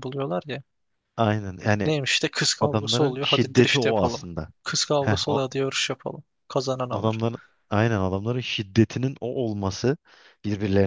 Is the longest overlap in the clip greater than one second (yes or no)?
yes